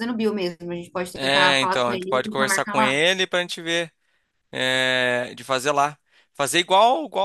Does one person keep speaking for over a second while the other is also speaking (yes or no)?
yes